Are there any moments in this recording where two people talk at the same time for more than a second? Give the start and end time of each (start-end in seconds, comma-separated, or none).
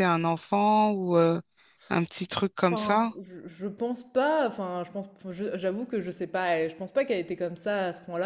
none